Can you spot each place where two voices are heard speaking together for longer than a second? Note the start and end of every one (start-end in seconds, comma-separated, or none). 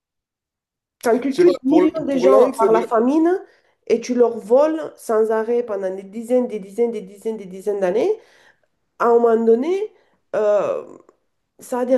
1.3-2.8